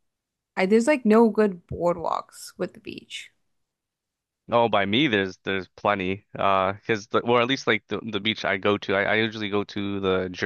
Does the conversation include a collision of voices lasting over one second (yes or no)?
no